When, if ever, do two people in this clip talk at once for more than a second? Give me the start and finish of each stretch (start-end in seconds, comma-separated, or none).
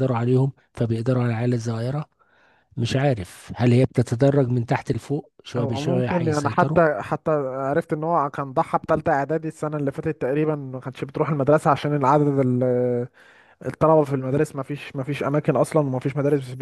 5.6-6.8